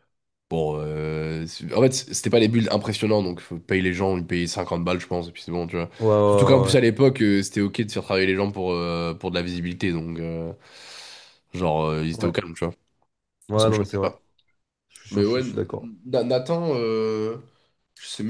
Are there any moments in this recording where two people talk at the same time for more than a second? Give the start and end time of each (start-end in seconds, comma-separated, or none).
none